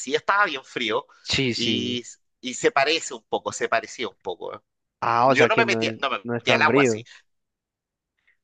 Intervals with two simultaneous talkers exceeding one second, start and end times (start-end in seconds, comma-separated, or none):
5.2-7.0